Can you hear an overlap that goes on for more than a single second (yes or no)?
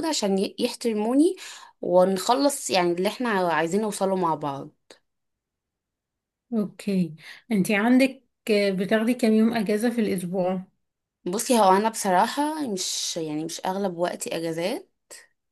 no